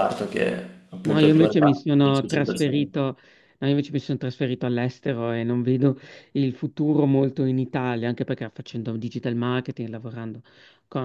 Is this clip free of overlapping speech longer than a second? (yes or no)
no